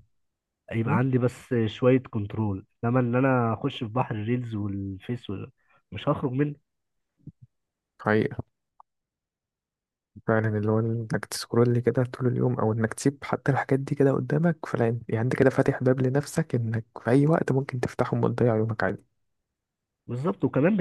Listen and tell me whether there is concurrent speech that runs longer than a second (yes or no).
no